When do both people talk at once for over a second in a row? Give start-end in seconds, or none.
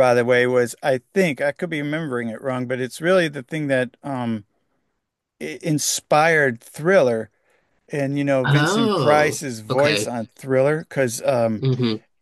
8.4-10.1